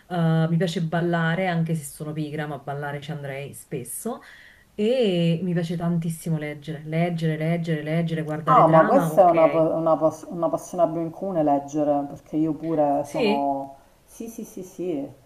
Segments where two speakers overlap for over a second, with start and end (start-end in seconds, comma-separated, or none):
8.4-9.7